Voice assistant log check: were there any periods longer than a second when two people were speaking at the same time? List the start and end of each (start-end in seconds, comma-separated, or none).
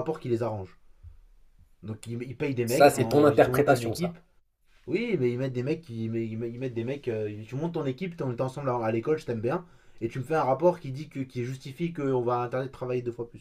2.6-4.2